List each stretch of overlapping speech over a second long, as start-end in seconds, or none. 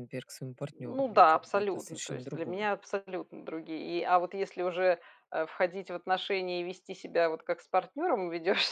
0.7-2.7